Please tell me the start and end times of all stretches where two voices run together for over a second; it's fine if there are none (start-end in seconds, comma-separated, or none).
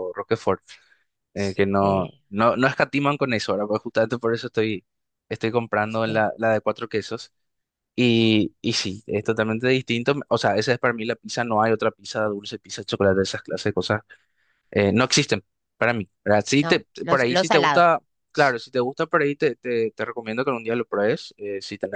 16.6-17.9